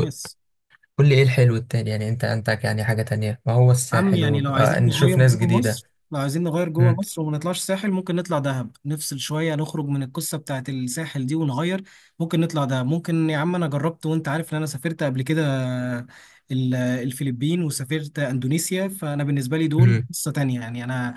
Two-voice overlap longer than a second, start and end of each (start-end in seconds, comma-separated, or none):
3.9-5.8